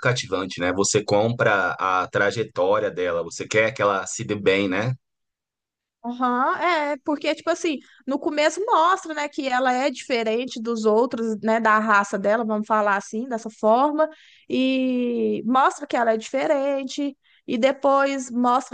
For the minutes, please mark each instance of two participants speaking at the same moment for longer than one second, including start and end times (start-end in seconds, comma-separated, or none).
none